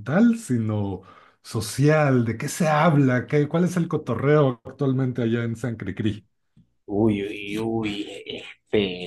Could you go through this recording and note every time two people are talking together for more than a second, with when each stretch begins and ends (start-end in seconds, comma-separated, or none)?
none